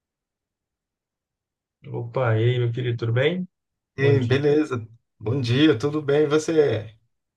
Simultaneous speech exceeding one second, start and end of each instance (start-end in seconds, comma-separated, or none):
none